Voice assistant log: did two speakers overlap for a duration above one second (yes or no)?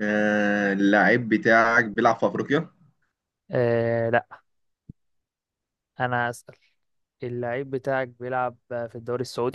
no